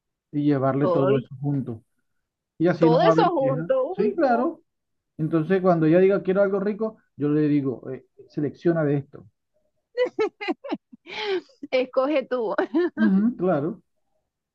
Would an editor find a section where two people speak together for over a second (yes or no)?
yes